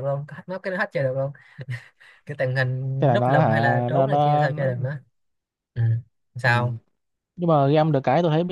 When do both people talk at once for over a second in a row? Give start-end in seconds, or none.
3.0-4.7